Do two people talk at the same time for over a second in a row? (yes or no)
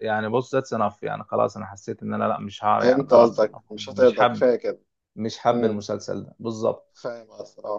yes